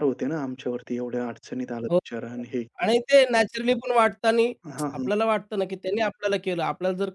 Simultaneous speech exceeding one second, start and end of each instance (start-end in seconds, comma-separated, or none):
none